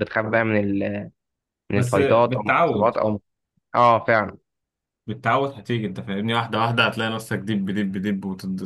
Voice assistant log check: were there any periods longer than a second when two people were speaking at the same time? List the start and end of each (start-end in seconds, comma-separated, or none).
1.7-3.0